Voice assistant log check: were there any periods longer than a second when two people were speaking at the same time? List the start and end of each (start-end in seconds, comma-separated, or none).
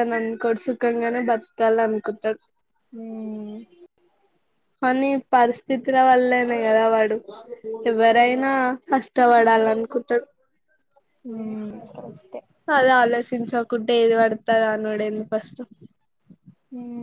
none